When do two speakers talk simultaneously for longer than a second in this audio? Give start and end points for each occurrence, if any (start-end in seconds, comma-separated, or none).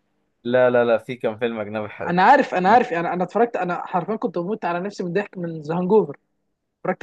none